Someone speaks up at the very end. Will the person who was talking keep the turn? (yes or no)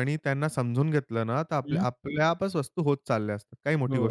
no